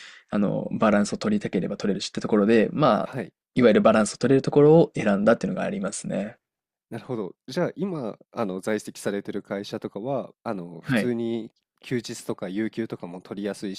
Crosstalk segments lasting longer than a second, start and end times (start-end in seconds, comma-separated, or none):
none